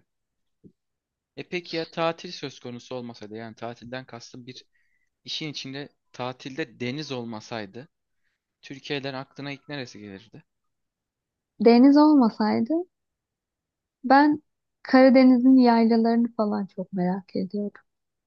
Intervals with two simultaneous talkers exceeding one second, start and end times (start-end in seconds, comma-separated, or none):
none